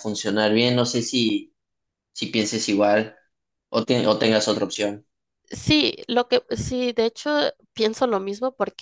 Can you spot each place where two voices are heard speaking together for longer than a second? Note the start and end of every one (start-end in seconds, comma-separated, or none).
none